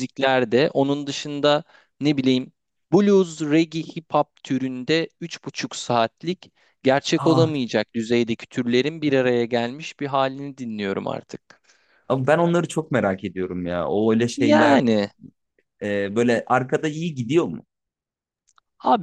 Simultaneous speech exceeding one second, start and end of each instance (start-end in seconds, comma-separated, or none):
none